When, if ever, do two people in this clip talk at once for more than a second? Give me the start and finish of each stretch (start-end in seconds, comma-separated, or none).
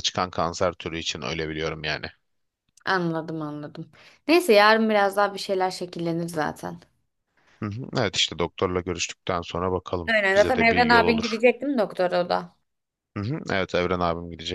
10.1-11.4